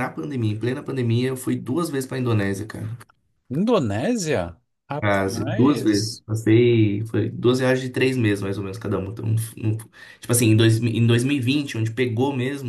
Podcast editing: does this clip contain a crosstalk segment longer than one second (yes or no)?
yes